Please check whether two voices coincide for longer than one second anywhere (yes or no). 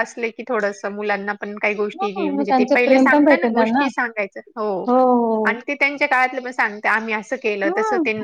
yes